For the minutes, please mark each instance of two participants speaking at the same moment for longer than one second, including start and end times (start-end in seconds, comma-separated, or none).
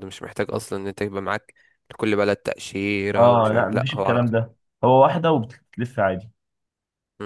3.1-4.4